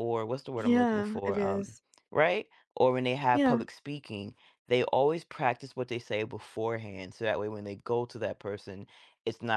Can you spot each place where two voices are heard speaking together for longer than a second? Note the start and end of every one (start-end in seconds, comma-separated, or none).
0.6-1.8